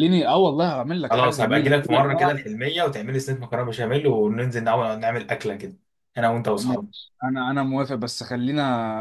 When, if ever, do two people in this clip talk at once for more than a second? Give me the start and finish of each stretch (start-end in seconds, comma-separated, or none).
1.1-2.4